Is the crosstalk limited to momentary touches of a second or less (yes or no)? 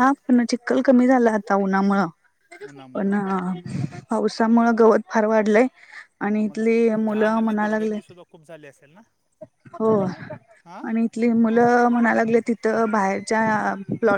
no